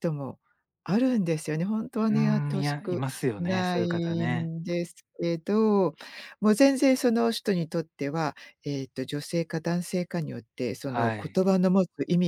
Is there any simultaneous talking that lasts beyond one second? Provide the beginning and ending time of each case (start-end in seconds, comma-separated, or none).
2.1-4.5